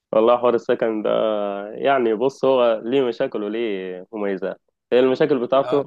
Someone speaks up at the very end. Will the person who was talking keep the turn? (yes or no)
yes